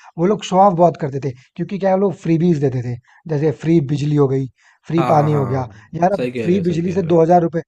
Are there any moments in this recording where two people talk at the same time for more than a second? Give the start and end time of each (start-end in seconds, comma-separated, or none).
5.0-7.2